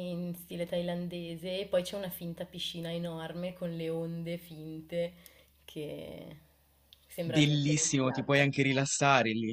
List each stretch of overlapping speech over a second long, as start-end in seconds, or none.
7.2-8.5